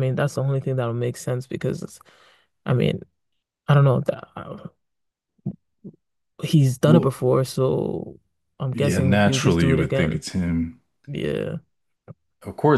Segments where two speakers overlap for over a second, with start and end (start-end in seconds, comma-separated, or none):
8.7-10.2